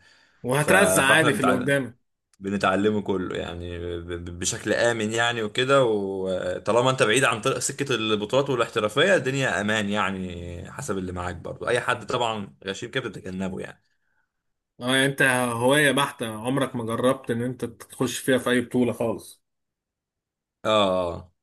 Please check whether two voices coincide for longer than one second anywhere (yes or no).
yes